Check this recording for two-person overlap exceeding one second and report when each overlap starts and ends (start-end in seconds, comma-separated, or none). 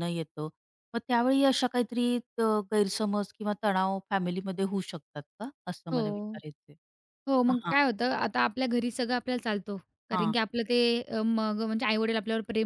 none